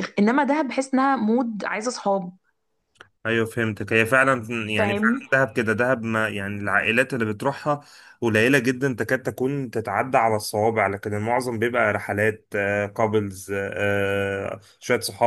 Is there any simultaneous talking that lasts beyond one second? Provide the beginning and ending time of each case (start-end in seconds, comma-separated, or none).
none